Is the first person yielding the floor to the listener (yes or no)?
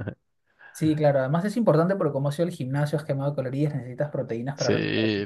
yes